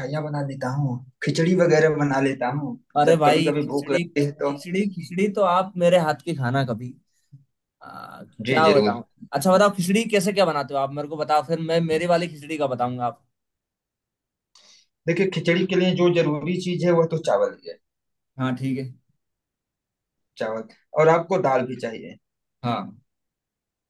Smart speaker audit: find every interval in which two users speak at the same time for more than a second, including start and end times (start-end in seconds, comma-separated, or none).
3.0-4.5